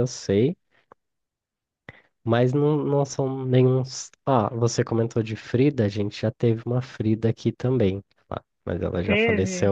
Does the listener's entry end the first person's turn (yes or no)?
no